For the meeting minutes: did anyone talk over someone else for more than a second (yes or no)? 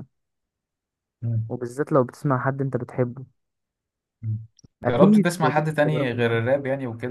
yes